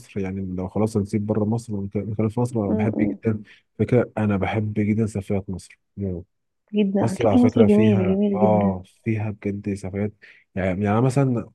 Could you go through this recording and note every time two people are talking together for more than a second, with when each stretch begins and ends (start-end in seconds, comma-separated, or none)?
7.0-8.8